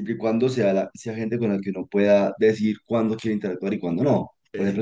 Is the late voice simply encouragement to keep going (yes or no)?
yes